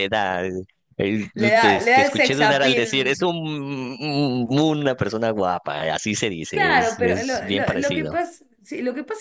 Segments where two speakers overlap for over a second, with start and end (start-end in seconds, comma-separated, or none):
1.4-3.1, 6.5-8.2